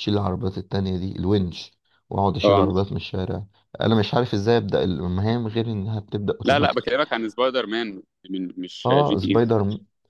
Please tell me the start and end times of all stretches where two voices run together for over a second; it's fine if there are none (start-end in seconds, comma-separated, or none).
none